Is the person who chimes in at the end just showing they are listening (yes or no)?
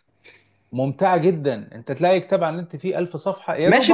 no